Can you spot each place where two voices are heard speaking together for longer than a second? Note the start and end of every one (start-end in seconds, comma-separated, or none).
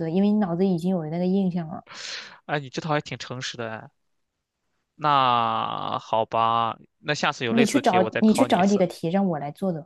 7.5-8.8